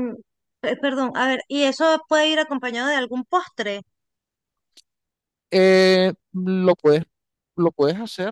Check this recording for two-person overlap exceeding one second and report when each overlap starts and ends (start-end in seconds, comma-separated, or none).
none